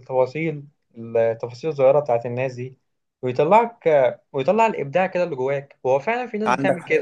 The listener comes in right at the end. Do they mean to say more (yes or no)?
no